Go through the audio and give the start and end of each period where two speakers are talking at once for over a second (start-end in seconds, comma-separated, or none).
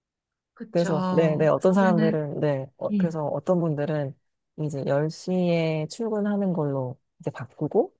0.7-2.1